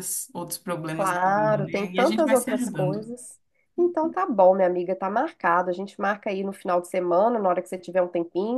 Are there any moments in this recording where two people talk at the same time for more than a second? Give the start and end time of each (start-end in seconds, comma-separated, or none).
0.9-3.2